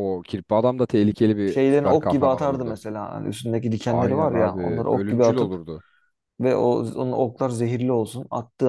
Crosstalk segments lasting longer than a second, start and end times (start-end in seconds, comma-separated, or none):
1.4-2.8, 3.9-5.5